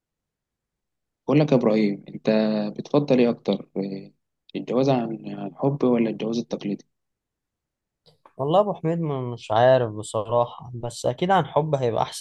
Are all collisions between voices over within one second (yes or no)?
yes